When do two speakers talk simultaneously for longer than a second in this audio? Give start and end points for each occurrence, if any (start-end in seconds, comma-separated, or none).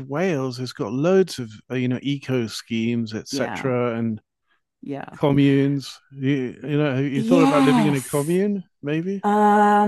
7.1-8.4